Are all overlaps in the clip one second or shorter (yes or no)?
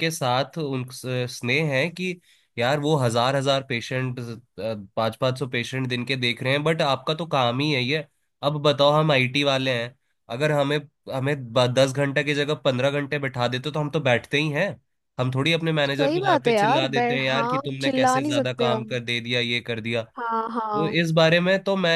no